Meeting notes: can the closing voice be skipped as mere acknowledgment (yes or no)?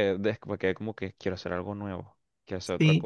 no